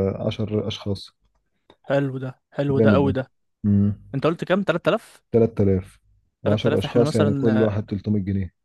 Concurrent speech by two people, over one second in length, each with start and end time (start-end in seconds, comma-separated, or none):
6.5-7.8